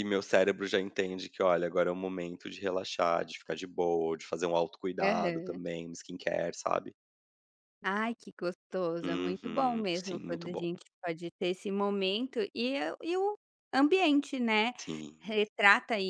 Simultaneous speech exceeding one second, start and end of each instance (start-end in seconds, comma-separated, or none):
9.0-10.7